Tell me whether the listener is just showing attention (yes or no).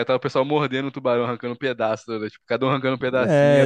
no